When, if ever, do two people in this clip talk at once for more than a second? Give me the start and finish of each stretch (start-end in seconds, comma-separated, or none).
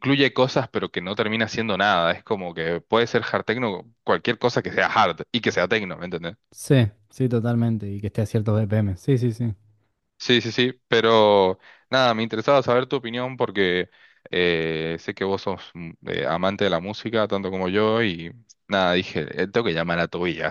none